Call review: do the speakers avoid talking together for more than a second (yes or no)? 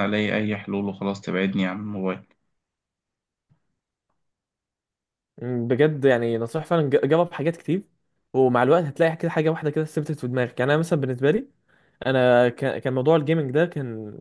yes